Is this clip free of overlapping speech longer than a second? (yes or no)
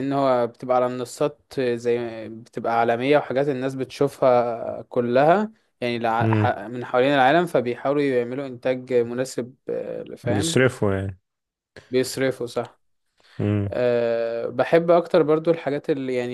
yes